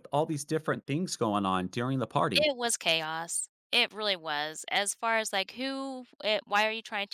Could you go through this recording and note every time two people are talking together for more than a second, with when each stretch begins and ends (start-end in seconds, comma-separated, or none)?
none